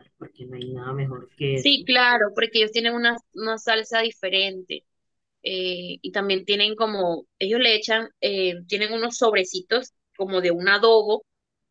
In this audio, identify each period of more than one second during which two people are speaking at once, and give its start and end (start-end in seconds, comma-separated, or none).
none